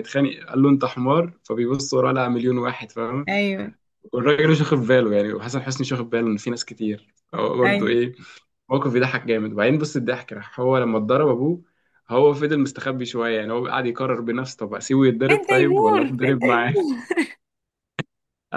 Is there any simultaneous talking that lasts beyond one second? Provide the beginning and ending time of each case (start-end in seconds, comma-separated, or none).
15.3-16.8